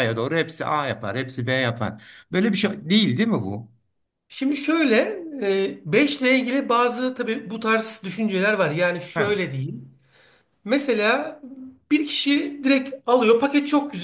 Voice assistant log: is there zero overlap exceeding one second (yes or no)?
yes